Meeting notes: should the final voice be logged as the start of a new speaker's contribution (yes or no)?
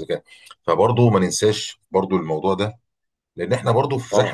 no